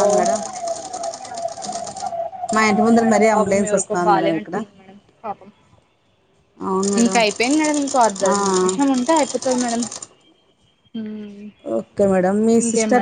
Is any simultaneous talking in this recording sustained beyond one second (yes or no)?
yes